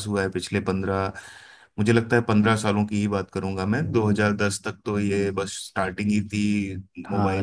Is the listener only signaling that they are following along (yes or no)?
no